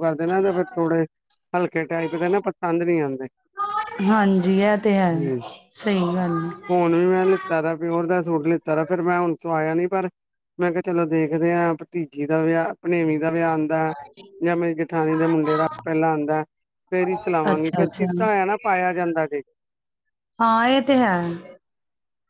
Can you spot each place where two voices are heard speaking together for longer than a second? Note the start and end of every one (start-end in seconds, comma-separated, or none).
none